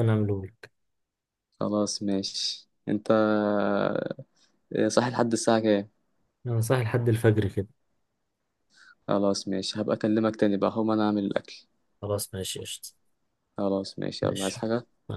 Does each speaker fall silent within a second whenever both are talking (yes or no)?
yes